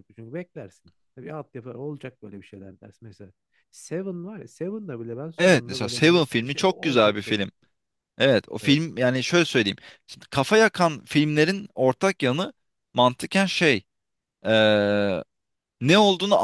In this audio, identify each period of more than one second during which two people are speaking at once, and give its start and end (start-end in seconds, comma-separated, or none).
5.4-7.5